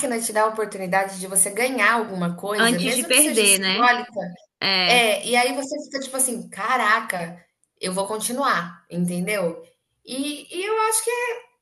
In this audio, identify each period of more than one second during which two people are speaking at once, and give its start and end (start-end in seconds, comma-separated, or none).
2.5-3.9